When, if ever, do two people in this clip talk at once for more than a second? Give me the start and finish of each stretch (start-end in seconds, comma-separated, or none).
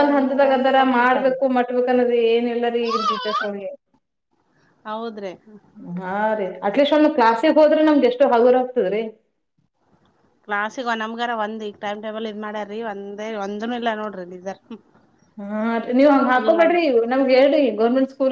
none